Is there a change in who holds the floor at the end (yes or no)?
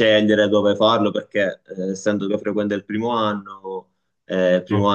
no